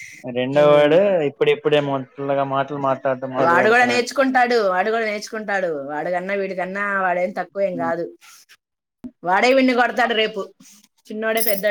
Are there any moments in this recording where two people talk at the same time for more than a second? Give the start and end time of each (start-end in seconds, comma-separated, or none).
none